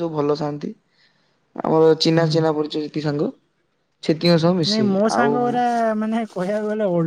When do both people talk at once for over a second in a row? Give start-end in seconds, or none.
none